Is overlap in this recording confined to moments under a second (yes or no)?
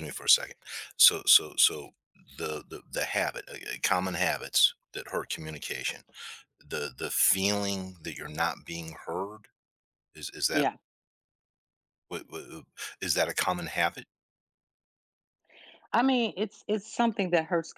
yes